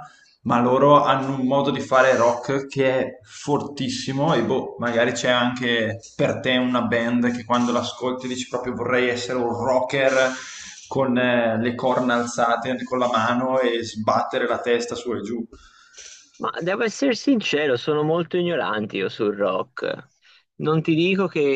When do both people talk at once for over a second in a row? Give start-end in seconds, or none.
none